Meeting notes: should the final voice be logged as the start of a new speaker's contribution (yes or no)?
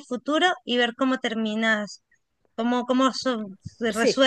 no